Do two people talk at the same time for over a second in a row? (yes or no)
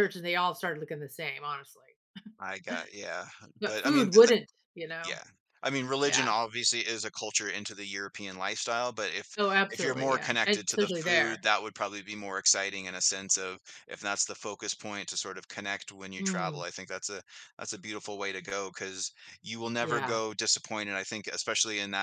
yes